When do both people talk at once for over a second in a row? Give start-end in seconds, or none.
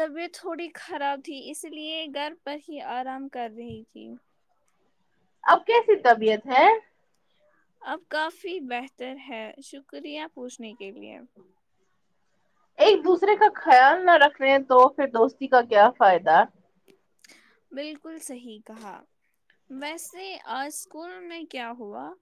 none